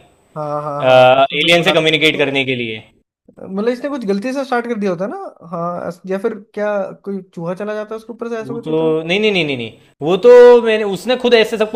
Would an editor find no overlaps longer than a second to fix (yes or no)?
no